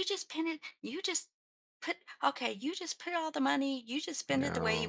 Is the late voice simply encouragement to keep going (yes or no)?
yes